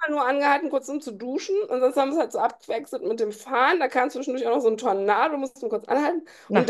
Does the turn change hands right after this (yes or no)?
no